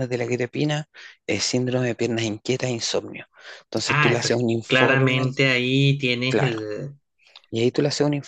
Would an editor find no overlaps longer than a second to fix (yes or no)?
no